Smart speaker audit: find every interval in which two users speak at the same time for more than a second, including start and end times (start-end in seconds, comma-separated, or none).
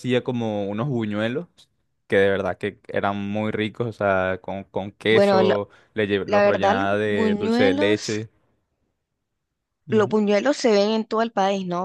6.2-8.1